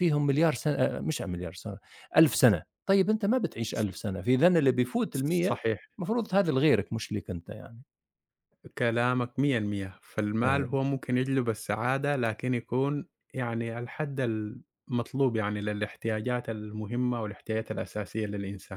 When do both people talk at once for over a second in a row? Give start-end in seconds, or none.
none